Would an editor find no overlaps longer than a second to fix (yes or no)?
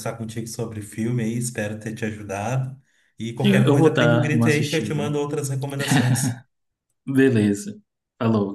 no